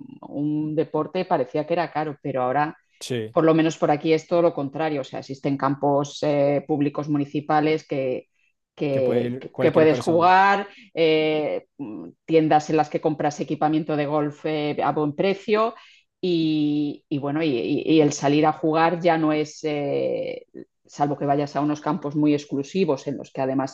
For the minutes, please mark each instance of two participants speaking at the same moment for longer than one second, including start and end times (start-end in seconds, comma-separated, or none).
8.9-10.3